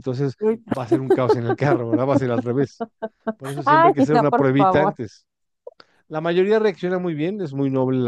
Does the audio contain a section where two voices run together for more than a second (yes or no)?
yes